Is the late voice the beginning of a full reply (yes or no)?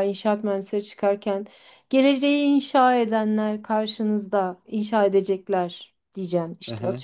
yes